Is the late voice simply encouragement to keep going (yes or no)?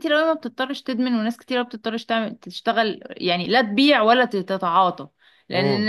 yes